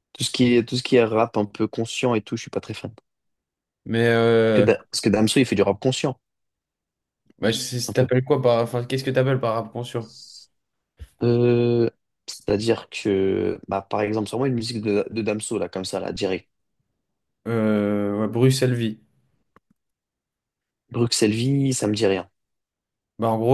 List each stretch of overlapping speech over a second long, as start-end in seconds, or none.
none